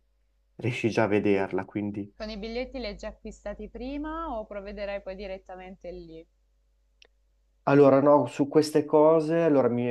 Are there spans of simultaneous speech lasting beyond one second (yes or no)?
no